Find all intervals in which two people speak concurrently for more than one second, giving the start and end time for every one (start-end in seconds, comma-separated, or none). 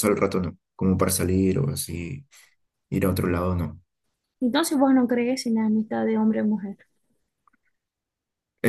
none